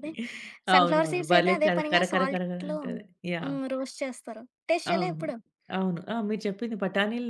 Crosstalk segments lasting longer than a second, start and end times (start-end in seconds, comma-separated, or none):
0.8-2.8